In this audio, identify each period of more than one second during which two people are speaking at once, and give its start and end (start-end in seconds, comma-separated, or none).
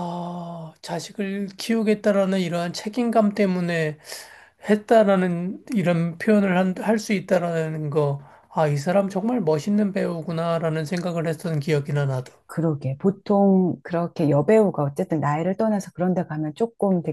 none